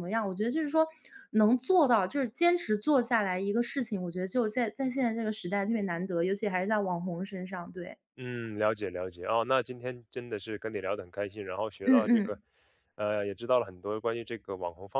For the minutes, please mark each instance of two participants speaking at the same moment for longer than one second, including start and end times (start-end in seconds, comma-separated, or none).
none